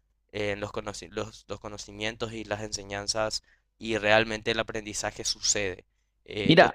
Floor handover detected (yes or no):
yes